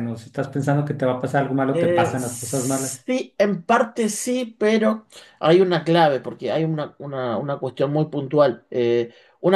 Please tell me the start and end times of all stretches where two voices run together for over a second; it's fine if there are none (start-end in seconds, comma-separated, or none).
1.7-3.1